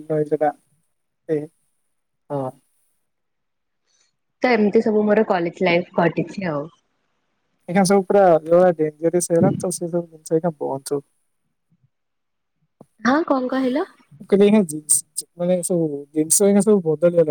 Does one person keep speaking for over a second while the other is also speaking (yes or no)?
no